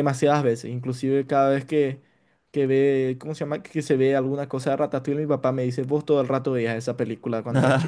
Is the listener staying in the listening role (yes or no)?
yes